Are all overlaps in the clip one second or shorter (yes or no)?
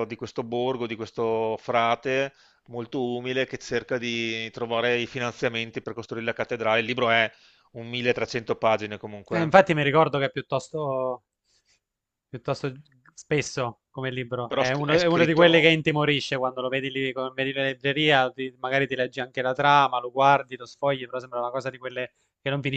no